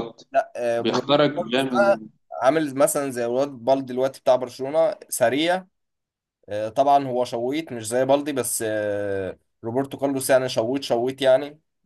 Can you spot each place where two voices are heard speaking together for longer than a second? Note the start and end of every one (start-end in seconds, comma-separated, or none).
0.8-2.0